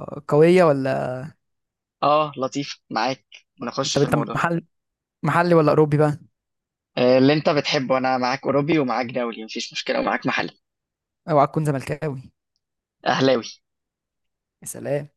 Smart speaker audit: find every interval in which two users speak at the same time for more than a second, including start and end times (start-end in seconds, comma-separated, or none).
none